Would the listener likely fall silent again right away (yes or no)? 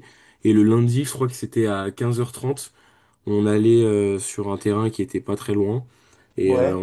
yes